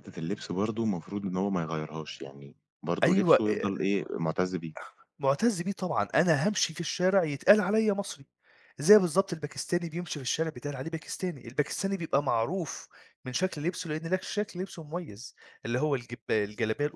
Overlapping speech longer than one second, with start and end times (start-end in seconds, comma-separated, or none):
none